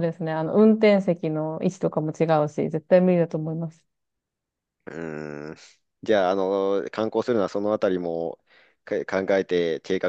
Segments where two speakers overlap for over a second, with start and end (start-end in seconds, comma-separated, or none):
none